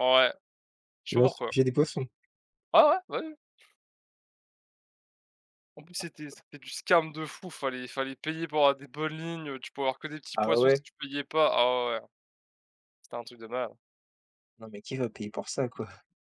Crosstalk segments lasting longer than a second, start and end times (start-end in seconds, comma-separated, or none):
none